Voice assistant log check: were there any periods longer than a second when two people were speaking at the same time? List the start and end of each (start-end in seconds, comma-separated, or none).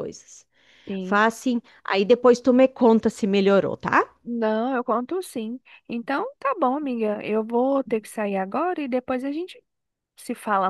none